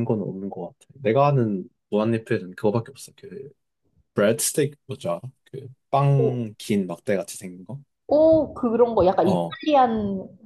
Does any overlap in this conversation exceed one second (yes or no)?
no